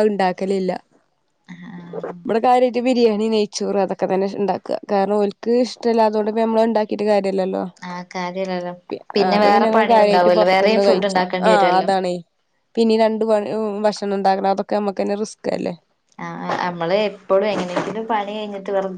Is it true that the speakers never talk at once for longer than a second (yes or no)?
no